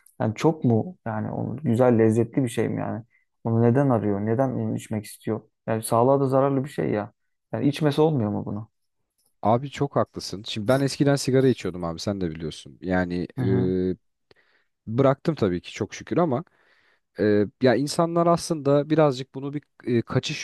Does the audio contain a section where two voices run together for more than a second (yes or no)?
no